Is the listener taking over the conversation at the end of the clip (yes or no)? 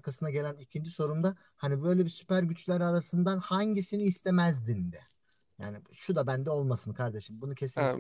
yes